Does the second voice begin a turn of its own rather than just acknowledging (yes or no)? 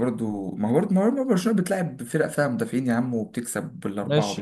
yes